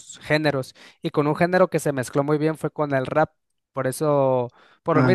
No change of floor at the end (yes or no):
yes